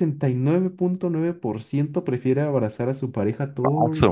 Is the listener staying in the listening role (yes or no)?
no